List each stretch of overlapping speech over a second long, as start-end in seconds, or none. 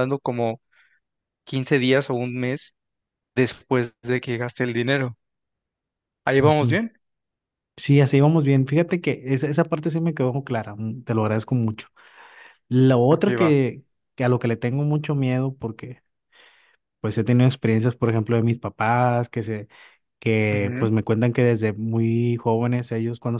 none